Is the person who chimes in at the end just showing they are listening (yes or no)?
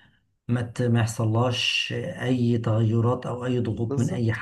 yes